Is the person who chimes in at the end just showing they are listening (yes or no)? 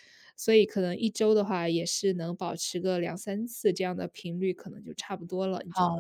no